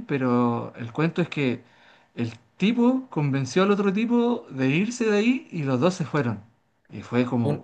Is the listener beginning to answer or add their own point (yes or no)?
yes